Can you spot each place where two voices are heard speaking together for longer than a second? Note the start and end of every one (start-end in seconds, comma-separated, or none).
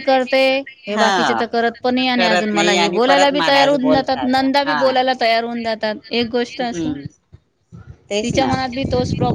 2.1-4.8